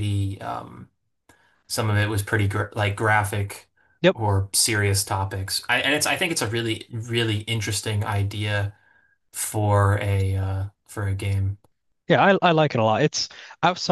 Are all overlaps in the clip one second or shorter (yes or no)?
yes